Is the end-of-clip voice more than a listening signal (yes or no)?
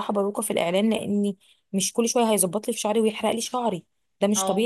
no